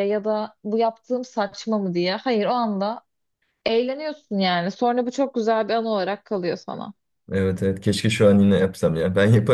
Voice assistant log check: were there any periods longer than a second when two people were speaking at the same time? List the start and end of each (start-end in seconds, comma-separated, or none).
none